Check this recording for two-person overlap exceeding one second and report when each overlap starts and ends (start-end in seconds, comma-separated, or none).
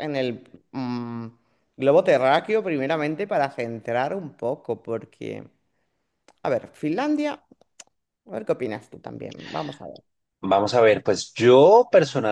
none